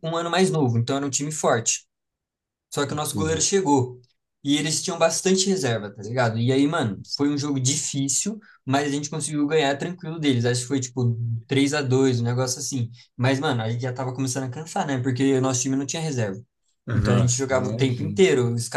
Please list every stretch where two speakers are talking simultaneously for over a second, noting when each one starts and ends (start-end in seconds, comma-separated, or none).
16.9-18.2